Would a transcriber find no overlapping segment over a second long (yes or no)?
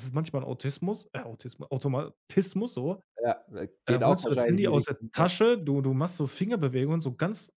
no